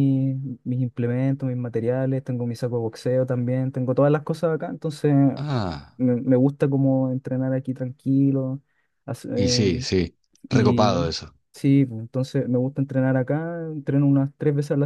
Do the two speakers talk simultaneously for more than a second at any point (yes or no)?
no